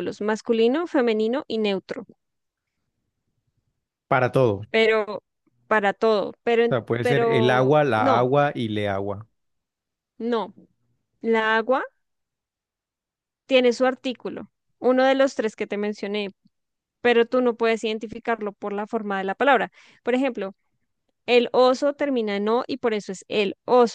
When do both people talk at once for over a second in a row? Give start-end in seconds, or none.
6.7-8.3